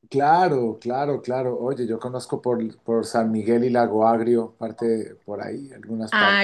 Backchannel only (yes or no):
no